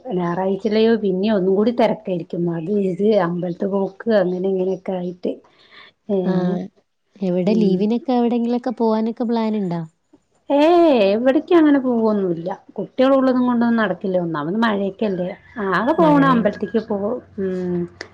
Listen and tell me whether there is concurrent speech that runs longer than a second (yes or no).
no